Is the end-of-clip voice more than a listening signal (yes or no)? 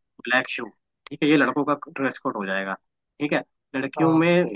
no